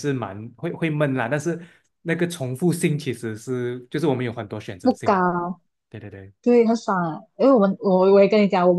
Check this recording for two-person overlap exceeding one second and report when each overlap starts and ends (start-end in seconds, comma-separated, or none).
none